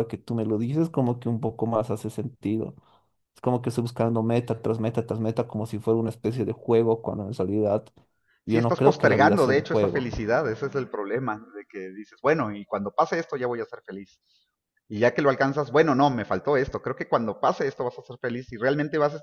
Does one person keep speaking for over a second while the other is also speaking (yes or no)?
yes